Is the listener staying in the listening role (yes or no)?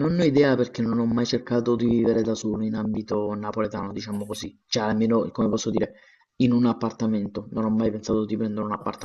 no